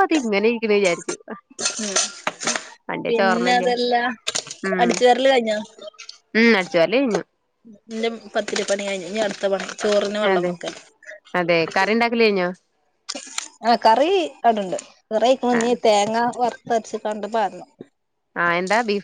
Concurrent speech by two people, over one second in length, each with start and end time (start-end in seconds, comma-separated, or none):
none